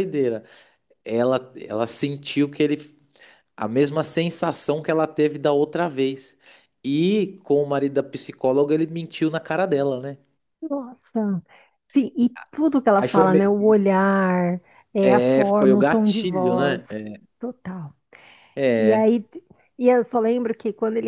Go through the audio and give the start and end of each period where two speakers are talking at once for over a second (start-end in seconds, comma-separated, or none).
15.0-16.8